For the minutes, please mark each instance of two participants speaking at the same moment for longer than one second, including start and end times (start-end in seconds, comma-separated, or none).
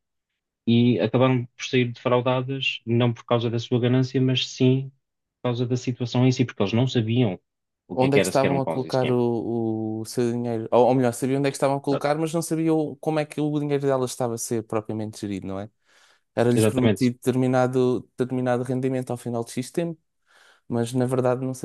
7.9-9.2